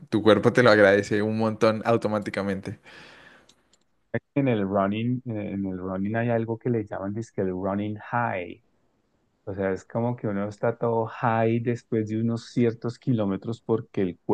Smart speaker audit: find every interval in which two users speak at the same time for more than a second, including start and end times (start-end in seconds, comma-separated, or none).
none